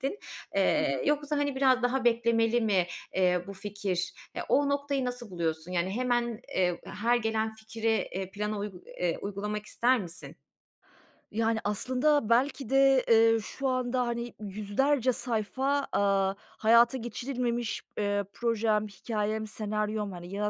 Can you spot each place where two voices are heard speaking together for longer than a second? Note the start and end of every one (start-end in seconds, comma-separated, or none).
none